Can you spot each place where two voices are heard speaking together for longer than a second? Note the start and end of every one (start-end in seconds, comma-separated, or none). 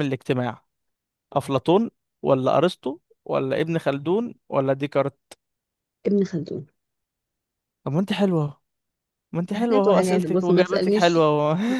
9.6-11.2